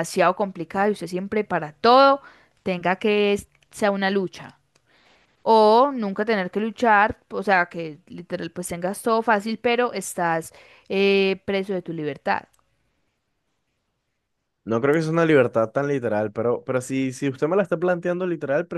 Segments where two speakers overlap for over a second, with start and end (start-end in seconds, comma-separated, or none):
none